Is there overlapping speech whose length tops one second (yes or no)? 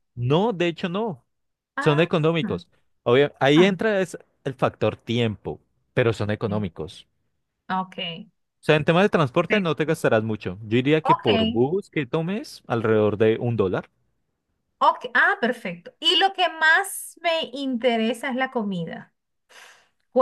no